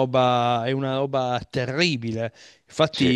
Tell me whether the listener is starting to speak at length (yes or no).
no